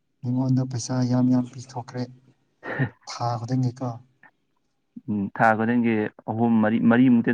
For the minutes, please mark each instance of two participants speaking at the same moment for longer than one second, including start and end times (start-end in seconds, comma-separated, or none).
none